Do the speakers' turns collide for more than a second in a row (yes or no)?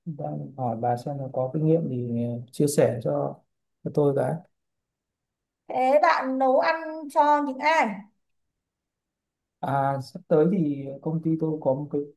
no